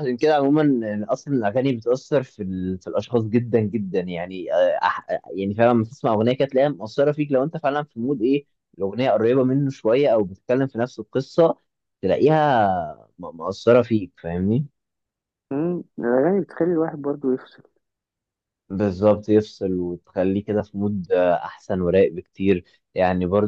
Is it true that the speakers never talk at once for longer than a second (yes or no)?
yes